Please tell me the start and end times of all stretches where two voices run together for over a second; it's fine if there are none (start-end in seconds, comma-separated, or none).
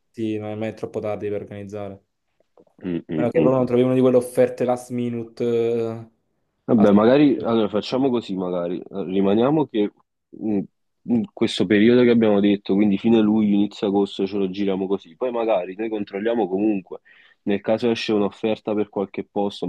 none